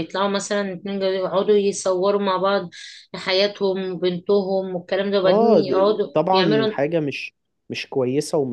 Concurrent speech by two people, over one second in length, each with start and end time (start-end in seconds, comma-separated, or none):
5.2-6.8